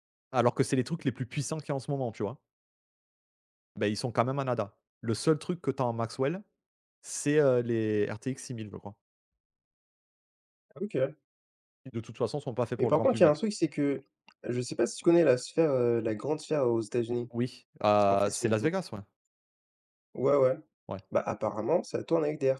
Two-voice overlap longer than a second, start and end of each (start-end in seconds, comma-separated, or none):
none